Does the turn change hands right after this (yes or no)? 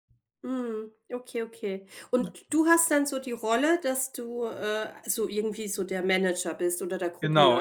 yes